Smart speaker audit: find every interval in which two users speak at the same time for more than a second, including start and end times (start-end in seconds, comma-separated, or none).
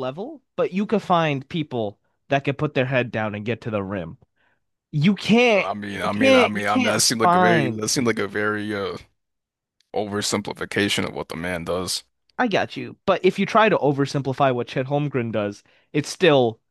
5.5-7.9